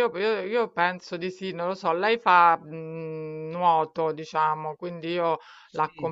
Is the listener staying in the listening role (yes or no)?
yes